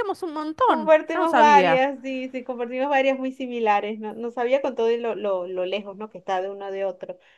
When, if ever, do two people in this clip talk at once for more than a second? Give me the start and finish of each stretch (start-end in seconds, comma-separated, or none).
0.7-1.9